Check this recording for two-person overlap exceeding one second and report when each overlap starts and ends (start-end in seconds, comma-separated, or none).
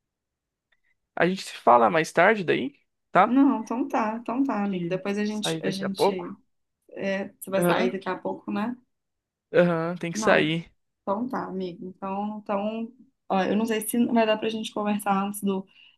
4.6-6.3